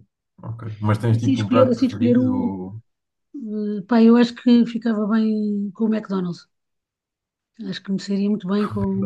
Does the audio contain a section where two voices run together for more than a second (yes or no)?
yes